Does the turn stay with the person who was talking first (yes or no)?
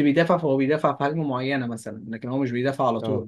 yes